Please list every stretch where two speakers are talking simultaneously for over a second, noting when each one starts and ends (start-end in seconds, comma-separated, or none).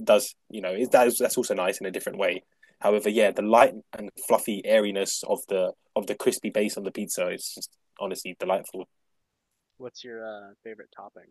none